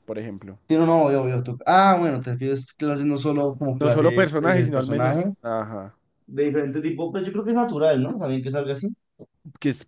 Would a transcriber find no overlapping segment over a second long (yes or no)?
no